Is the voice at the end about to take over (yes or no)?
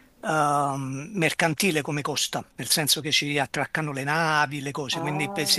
yes